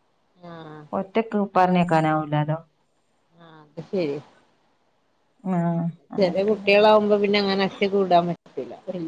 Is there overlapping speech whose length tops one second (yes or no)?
no